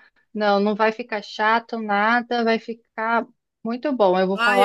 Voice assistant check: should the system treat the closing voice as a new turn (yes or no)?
yes